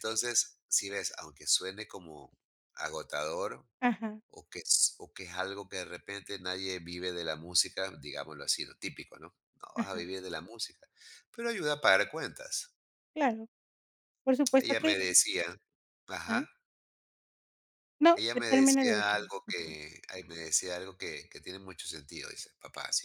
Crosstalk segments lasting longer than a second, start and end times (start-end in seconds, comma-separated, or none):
18.2-19.8